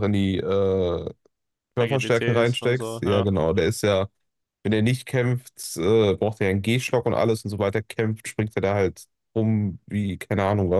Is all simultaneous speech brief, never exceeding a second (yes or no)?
no